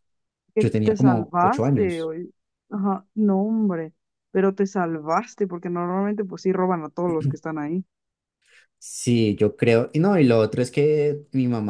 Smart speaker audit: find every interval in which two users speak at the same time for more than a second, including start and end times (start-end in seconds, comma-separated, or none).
0.6-2.1